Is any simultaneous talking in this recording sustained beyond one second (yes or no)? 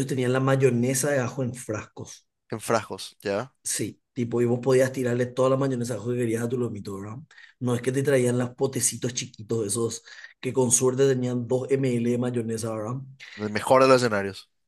no